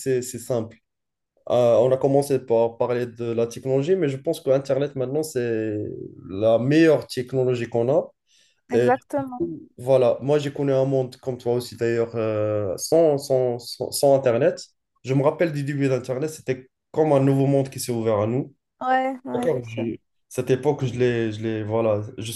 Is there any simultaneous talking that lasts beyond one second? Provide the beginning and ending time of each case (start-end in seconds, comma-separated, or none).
none